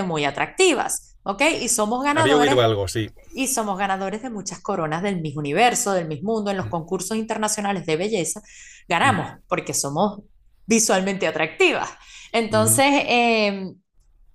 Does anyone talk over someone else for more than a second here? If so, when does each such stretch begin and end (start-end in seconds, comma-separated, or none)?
none